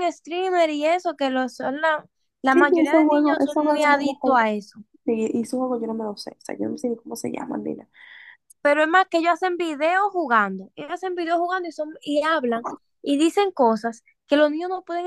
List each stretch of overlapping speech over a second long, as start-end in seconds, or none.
2.5-4.5